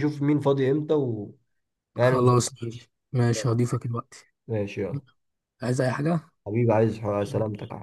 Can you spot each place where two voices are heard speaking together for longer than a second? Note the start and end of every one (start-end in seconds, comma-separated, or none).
none